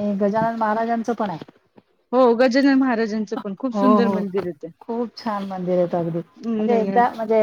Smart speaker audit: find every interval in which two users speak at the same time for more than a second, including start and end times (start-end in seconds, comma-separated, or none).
none